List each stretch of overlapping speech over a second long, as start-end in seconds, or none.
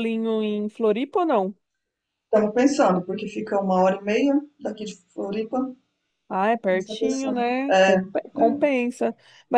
6.6-8.0